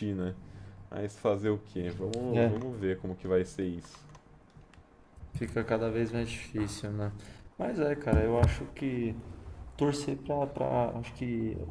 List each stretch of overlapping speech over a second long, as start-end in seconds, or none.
none